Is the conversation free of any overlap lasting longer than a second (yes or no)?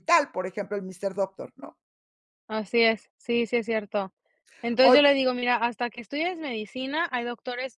yes